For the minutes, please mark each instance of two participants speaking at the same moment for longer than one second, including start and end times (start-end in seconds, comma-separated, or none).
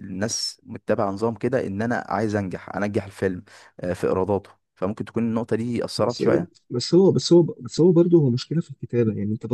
none